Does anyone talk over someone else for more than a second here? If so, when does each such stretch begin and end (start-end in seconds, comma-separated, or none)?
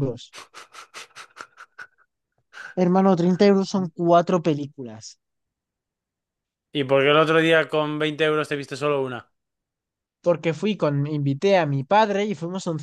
none